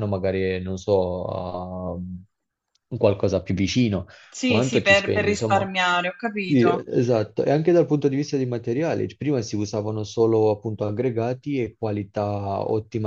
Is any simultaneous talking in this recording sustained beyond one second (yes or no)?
yes